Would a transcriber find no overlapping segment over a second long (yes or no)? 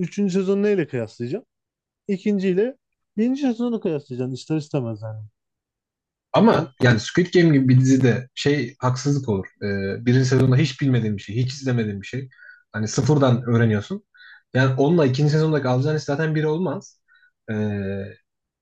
yes